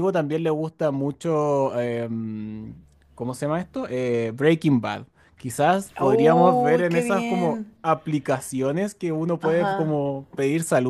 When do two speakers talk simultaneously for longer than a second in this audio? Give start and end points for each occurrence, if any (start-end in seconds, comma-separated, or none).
6.0-7.7